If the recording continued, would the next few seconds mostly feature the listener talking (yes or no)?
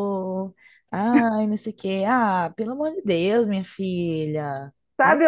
yes